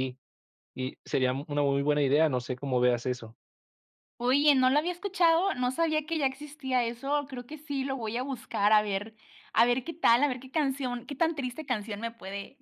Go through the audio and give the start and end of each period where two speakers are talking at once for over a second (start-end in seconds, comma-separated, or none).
none